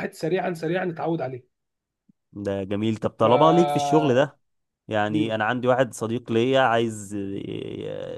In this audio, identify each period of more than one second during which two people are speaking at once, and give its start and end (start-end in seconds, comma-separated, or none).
none